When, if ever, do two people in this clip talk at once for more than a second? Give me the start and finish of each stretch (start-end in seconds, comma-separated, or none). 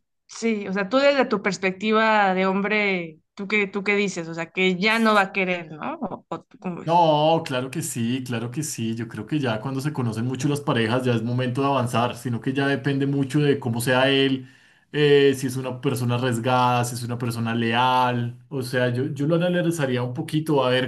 none